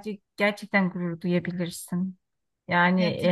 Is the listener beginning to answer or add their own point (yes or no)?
yes